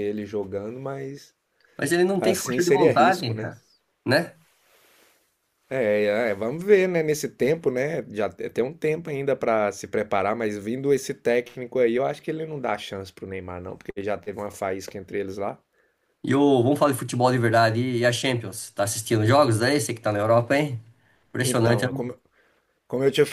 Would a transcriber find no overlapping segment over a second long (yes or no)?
no